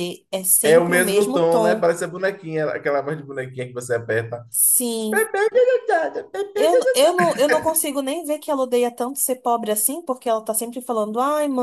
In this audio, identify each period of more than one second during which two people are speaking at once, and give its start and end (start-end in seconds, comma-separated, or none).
0.6-1.9